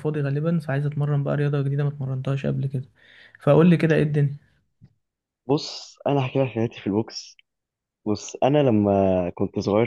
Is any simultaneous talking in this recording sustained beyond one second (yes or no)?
no